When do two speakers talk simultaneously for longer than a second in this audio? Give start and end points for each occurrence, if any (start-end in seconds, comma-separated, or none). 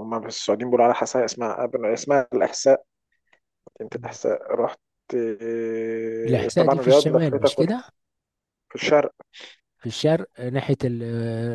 6.2-7.8